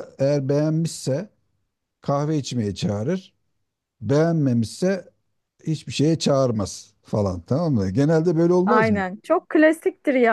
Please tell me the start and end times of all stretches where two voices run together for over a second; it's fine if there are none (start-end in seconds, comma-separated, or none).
none